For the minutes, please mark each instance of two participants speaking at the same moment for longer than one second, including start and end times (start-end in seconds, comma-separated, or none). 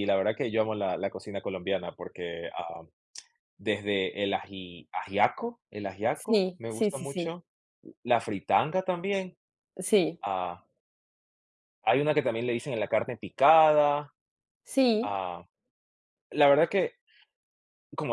6.1-7.4